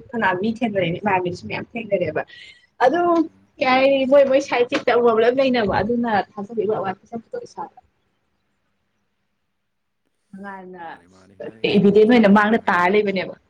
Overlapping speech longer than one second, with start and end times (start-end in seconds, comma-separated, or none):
11.8-13.0